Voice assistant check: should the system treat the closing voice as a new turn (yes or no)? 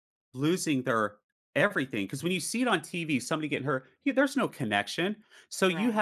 no